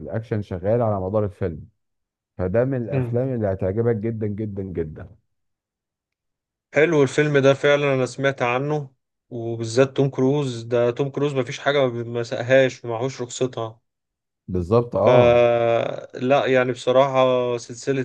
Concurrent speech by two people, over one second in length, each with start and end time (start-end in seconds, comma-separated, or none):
none